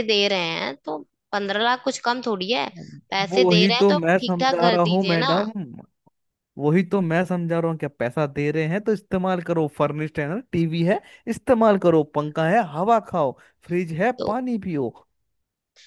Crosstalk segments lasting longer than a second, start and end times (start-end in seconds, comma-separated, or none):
3.3-5.3